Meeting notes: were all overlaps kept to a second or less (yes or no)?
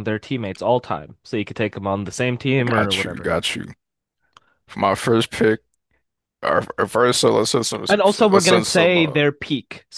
no